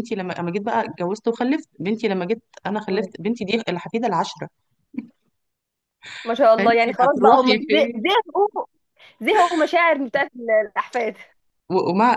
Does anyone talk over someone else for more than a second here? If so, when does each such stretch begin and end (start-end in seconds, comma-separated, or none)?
6.6-8.0